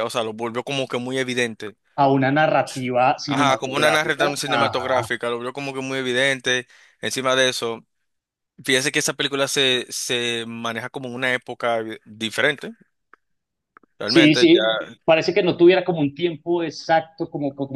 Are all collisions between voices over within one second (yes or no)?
no